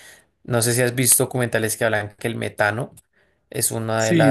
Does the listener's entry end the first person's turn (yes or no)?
yes